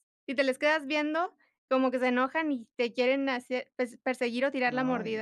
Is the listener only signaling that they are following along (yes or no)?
no